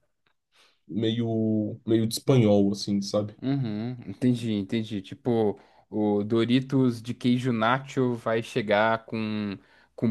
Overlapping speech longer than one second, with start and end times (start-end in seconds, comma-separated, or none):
none